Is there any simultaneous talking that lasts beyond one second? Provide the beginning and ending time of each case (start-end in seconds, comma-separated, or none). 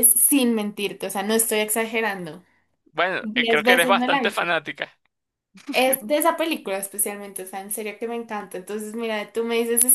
3.2-4.5